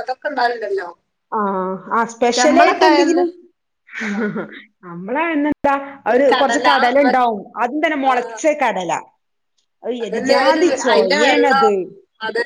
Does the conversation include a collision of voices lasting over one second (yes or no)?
yes